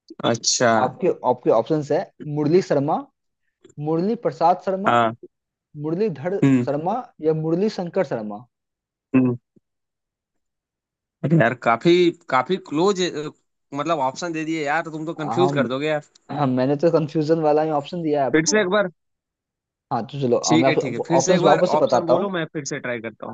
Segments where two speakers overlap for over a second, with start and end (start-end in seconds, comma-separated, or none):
20.5-22.3